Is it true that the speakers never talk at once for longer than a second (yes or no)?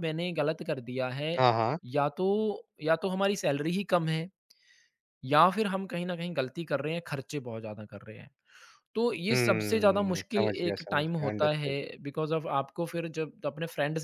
no